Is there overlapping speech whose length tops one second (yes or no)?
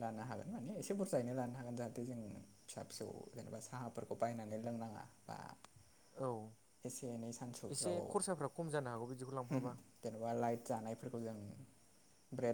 no